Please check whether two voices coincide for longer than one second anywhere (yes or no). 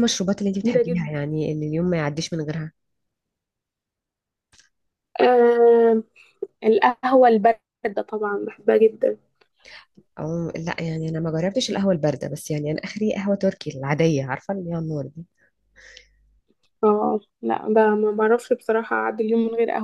no